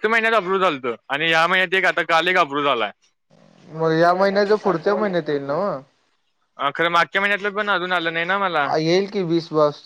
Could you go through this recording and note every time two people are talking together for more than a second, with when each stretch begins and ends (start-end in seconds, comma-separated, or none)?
none